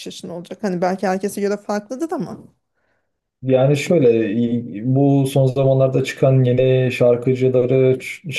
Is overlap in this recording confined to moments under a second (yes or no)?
yes